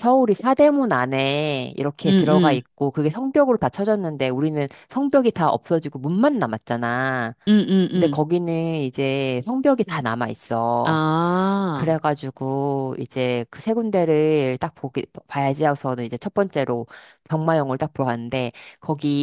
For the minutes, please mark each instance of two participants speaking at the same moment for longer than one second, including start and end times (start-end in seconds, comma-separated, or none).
none